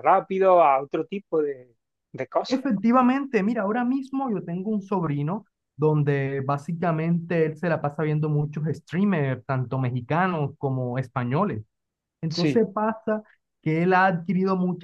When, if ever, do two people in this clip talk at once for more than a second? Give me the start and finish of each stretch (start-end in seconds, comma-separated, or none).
none